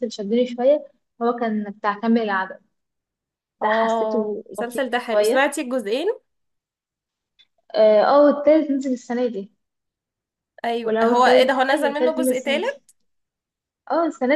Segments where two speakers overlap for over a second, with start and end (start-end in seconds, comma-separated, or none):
3.6-5.5, 10.8-12.8